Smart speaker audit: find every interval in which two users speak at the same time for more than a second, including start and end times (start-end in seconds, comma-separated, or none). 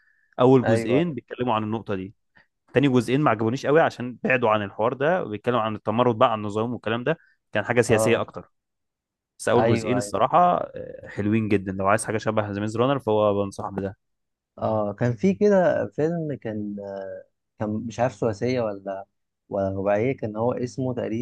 none